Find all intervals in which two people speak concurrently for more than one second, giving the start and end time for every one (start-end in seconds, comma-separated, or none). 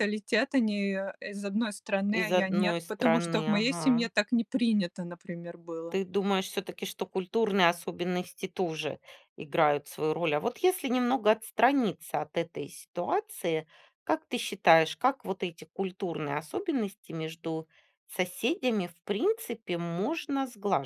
2.1-4.1